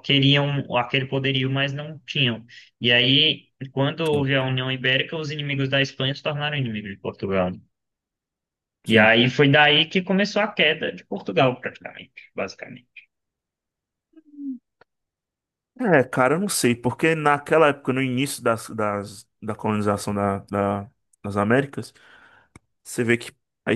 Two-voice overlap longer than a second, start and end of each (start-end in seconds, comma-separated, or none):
none